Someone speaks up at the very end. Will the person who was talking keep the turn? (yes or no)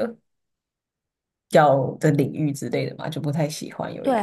no